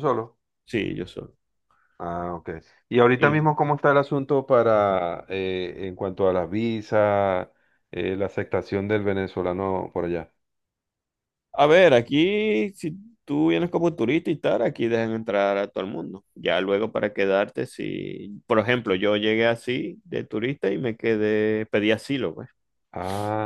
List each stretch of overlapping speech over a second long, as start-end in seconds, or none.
none